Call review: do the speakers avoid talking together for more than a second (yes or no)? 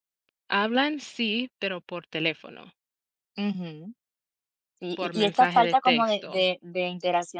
no